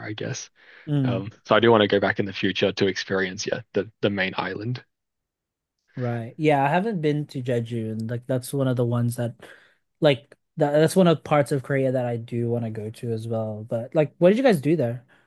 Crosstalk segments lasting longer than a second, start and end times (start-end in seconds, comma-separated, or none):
none